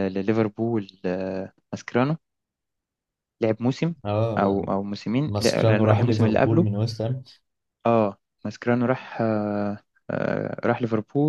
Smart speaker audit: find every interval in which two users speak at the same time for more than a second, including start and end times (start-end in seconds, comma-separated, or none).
5.2-6.7